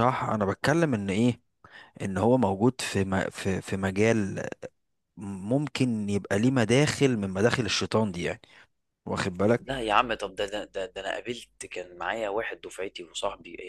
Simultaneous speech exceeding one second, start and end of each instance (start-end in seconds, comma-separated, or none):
none